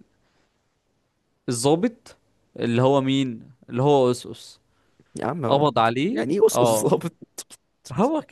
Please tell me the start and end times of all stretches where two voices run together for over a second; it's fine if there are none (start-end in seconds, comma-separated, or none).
5.5-7.1